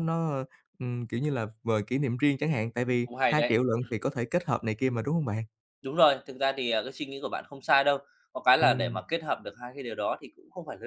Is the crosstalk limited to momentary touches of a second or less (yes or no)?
yes